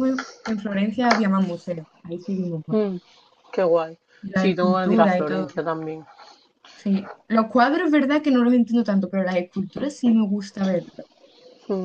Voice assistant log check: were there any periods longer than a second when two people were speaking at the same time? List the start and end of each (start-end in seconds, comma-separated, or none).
4.2-5.5